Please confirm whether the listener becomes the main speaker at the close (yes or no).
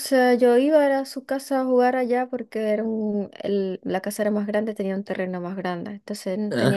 no